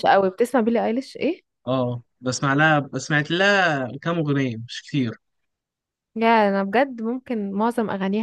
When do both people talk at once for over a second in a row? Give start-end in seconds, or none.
none